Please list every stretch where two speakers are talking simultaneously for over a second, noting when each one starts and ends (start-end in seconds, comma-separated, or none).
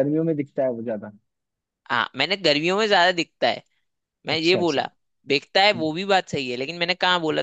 none